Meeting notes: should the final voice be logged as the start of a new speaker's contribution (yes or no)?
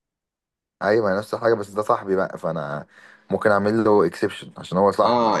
yes